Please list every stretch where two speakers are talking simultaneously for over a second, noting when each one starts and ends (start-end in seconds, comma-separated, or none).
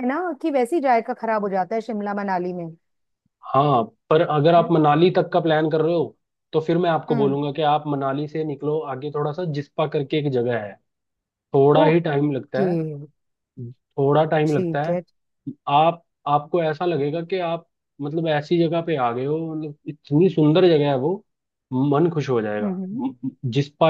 none